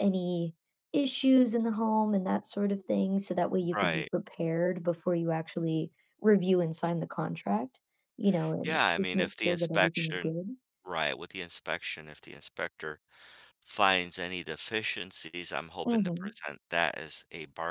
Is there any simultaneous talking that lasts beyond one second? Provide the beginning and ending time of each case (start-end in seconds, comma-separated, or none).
8.6-10.3